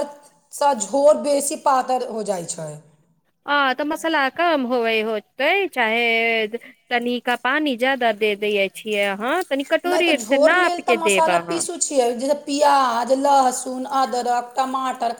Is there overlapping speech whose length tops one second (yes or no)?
yes